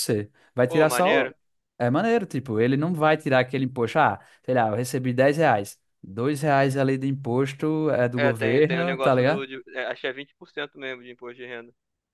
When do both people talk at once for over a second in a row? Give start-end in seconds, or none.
8.2-9.5